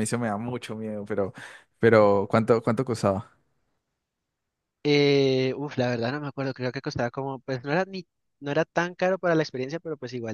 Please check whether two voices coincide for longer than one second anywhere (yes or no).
no